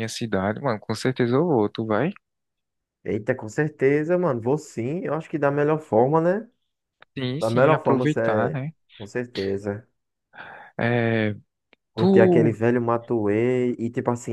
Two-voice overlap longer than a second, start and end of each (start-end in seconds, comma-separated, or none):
7.4-8.7